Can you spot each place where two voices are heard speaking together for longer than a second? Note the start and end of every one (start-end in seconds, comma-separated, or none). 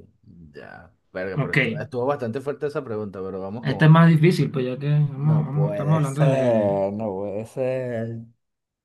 5.2-6.8